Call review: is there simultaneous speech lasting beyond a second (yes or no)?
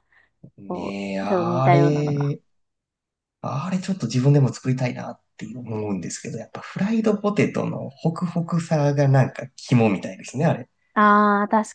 yes